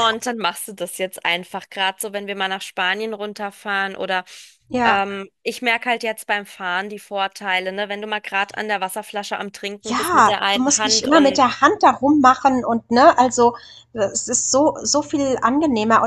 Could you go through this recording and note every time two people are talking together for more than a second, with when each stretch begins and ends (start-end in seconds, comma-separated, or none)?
9.8-11.4